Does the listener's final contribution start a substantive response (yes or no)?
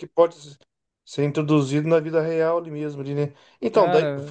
no